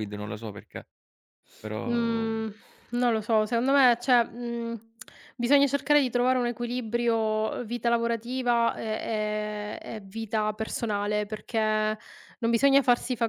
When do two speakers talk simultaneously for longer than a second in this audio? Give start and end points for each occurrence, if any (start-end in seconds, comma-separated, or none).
none